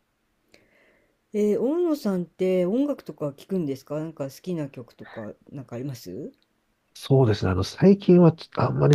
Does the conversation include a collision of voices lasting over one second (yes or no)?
no